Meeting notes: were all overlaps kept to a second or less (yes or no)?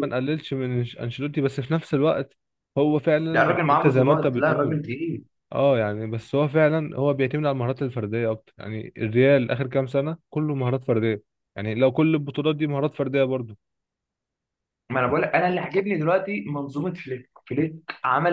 no